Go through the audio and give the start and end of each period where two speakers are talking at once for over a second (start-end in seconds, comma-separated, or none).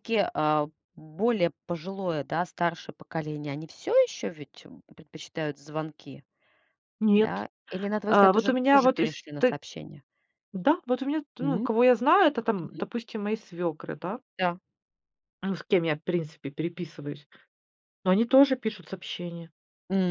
8.1-9.6